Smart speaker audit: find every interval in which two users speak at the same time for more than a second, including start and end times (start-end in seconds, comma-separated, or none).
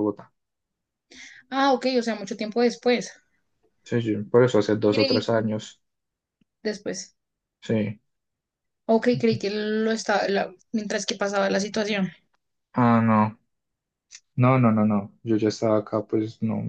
none